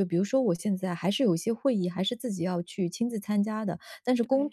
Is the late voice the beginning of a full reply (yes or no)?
no